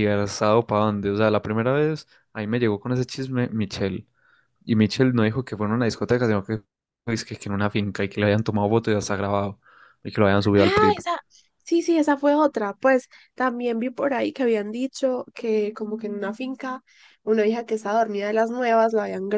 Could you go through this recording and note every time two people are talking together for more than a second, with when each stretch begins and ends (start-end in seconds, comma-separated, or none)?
none